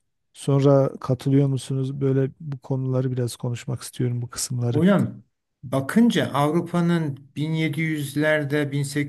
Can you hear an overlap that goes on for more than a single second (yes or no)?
no